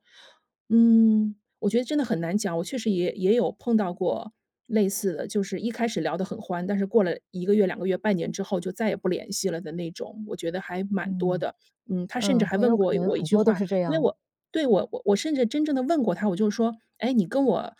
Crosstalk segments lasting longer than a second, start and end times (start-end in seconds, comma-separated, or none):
12.2-14.1